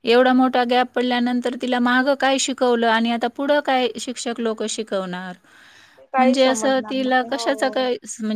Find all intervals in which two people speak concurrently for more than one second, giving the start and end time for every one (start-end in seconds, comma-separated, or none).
6.2-7.8